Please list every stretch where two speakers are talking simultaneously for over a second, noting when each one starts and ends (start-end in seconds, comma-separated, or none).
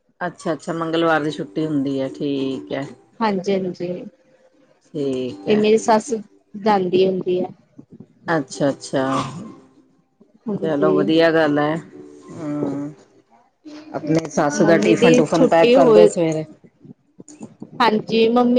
14.6-16.1